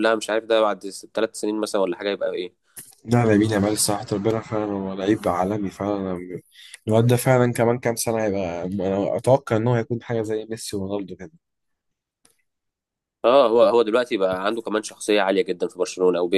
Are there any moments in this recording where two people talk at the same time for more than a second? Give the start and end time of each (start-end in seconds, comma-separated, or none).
none